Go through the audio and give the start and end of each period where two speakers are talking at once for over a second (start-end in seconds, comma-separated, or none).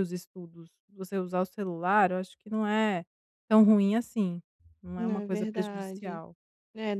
5.0-6.2